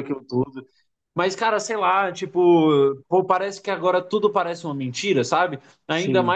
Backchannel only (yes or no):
yes